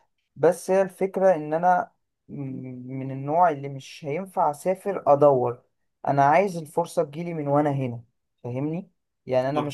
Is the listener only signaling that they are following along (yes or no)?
yes